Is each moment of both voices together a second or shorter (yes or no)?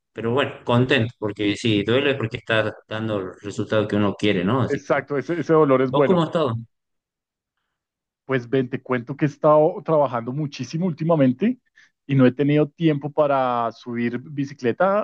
yes